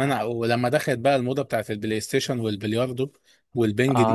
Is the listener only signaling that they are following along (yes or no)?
no